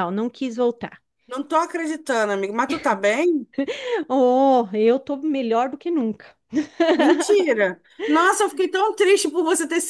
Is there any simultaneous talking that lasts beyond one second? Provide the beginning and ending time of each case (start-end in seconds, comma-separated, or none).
none